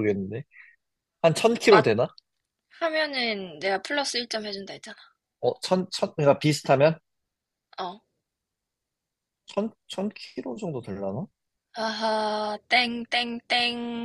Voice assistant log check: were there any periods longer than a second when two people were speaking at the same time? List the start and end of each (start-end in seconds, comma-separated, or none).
none